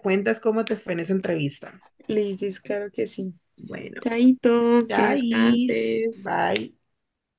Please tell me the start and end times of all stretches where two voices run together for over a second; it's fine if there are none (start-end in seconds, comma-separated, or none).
4.9-6.3